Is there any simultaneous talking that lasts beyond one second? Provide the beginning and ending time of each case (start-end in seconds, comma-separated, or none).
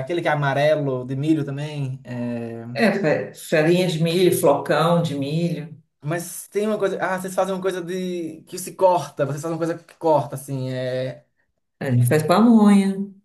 none